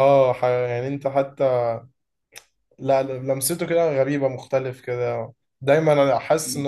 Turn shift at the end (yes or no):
no